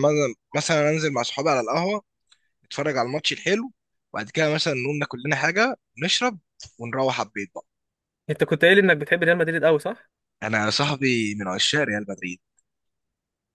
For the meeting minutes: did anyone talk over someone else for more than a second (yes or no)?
no